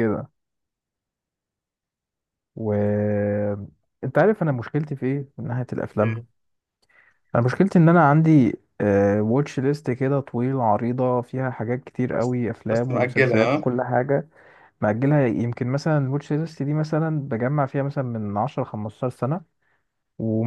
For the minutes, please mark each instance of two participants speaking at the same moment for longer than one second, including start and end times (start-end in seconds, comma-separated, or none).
12.1-13.7